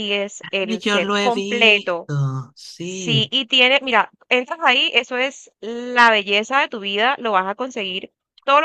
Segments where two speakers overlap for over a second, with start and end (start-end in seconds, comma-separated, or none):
0.6-2.1